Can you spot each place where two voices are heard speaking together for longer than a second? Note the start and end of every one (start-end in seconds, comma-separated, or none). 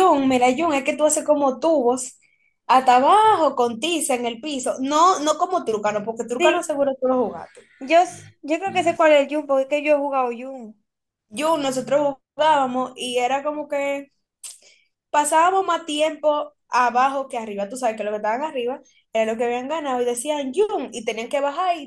none